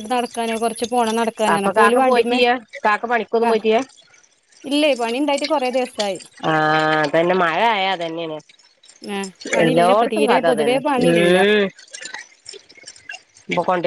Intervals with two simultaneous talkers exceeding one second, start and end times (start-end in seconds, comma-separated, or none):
9.6-11.4